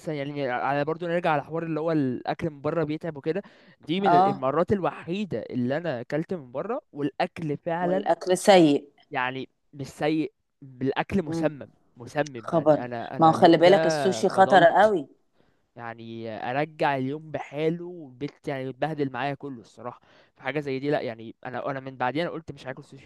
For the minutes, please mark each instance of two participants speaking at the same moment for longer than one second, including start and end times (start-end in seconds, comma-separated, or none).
12.4-14.9